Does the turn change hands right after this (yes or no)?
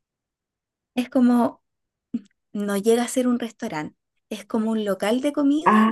yes